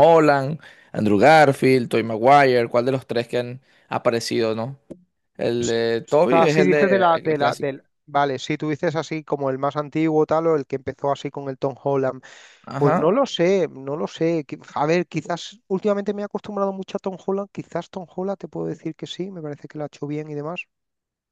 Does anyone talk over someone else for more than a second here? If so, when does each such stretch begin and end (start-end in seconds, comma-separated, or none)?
6.3-7.7